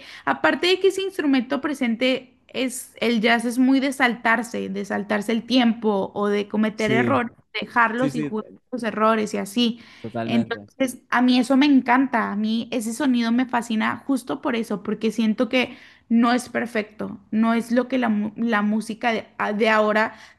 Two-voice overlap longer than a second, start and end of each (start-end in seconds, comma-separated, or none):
none